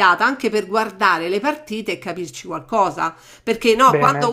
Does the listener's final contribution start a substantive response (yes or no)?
no